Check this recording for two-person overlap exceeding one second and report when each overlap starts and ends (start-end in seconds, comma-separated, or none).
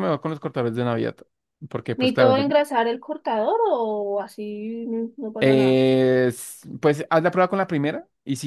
none